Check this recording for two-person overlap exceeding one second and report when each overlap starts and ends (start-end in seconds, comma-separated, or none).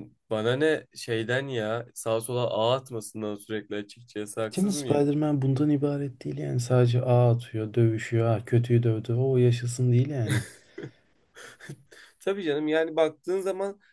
none